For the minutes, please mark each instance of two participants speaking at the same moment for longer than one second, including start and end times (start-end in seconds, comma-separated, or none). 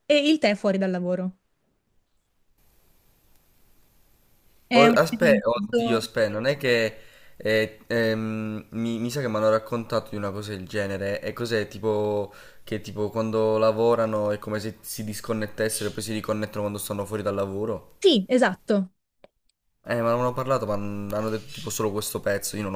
4.8-6.1